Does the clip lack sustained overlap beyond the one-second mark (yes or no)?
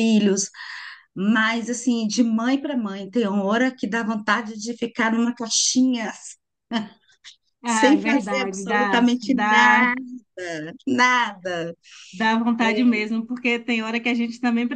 no